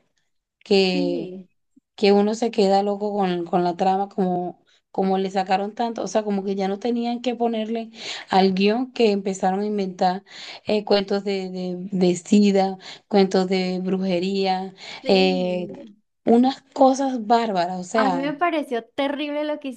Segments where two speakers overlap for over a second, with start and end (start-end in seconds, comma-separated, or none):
none